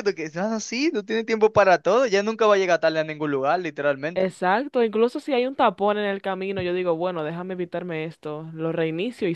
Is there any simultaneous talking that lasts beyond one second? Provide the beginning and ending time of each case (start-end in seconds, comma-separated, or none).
none